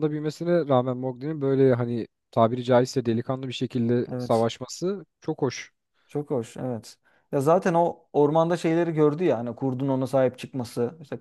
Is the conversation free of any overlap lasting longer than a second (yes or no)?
yes